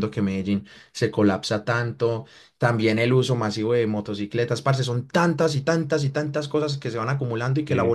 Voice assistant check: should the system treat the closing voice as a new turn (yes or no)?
no